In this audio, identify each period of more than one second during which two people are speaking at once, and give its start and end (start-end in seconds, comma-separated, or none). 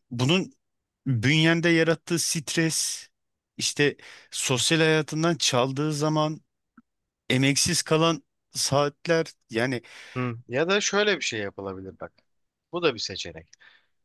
none